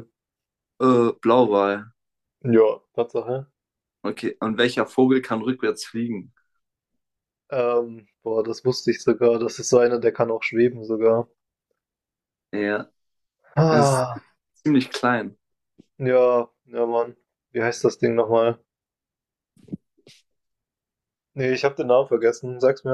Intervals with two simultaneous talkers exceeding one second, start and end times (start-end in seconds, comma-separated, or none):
none